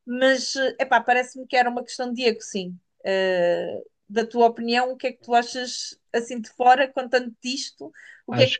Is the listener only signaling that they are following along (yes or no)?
no